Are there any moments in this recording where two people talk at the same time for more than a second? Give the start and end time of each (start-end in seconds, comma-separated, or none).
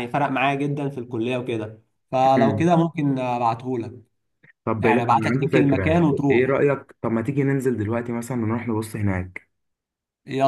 4.8-6.6